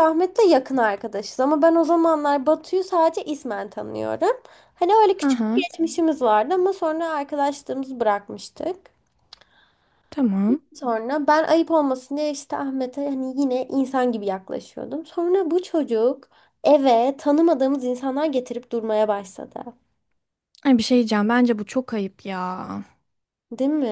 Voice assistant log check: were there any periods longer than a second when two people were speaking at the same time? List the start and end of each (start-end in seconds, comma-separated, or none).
none